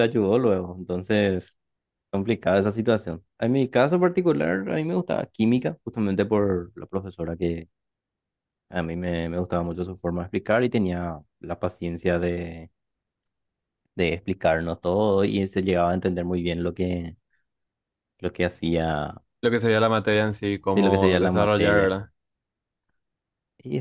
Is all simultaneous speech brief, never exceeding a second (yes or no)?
no